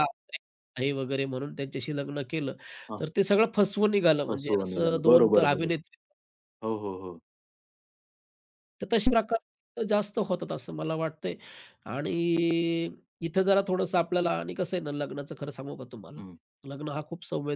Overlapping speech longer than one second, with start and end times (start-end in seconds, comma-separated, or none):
4.3-5.8